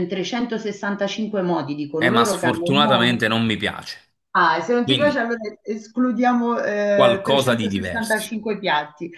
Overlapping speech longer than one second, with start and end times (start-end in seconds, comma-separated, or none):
2.0-3.2, 6.9-8.3